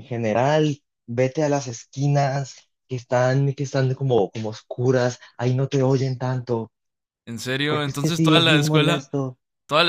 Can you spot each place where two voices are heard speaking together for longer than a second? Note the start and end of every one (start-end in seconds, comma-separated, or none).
7.7-9.1